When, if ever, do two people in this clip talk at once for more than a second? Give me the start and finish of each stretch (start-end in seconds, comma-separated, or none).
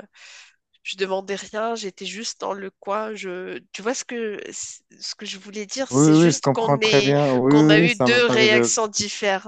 5.9-8.9